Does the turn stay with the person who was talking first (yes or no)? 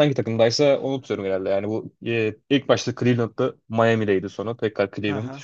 no